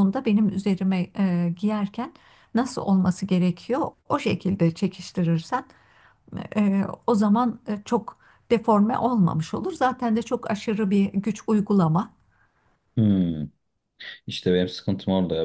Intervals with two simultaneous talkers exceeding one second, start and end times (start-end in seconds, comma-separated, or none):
none